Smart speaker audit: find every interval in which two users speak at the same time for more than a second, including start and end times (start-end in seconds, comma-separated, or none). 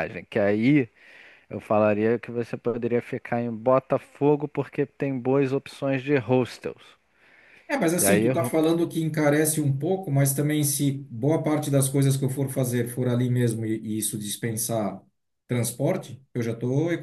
none